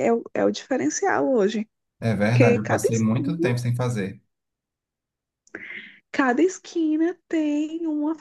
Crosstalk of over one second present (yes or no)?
yes